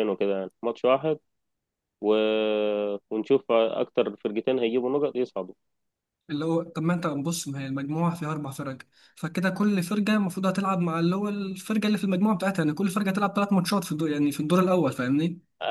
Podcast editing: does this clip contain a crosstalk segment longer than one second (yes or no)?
no